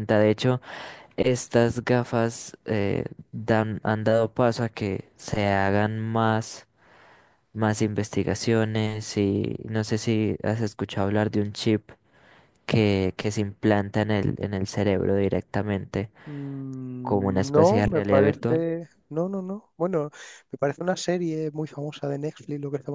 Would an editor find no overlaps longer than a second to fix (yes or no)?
no